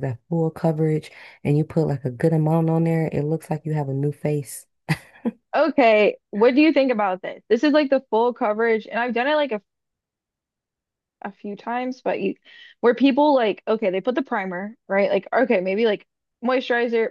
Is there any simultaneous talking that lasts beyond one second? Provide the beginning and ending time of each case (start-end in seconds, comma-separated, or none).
none